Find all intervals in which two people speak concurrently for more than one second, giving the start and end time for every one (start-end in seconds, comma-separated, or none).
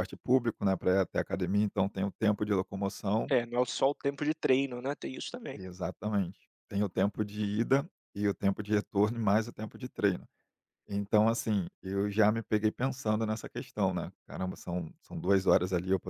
none